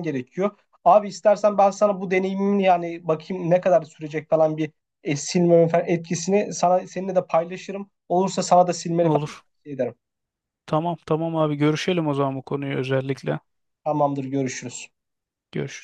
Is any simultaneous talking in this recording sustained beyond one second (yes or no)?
no